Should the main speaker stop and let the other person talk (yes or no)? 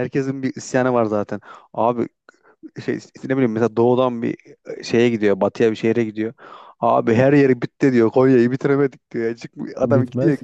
no